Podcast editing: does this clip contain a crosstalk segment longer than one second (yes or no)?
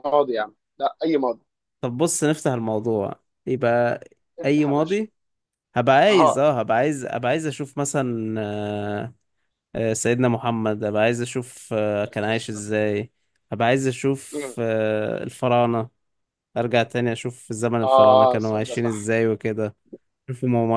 yes